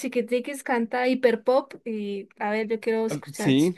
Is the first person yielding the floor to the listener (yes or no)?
yes